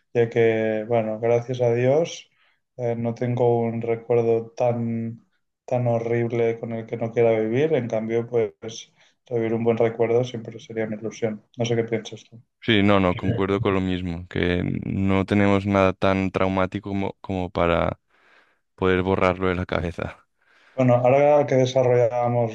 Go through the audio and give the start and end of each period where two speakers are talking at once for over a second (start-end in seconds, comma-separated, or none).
none